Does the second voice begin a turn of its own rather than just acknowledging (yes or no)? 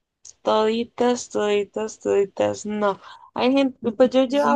no